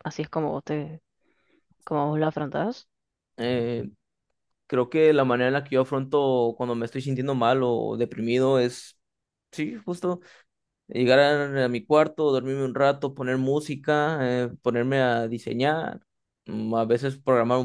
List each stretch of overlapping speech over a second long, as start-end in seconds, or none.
none